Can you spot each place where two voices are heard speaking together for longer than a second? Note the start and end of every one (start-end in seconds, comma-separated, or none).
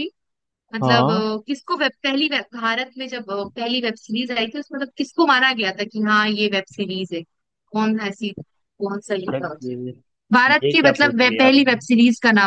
10.5-11.8